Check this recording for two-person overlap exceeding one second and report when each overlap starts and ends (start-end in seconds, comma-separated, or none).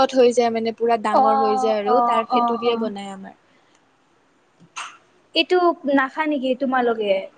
1.1-2.9